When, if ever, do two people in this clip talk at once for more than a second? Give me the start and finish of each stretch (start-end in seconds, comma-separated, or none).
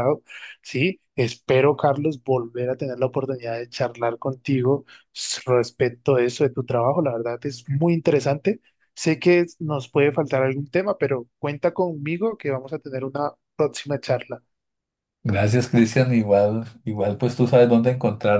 none